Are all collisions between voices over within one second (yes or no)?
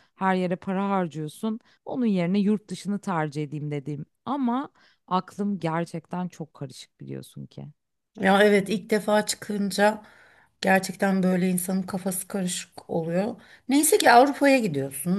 yes